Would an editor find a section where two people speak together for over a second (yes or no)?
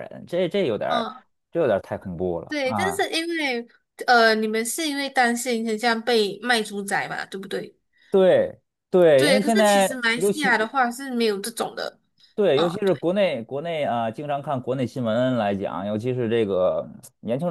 yes